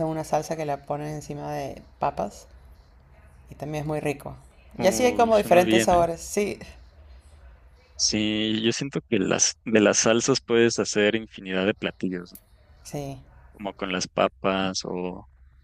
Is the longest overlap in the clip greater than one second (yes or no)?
yes